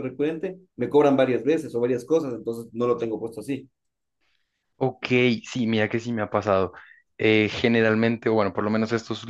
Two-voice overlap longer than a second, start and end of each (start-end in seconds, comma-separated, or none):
none